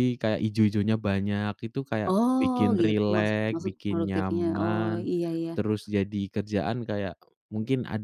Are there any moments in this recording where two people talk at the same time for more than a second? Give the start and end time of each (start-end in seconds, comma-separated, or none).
2.1-5.1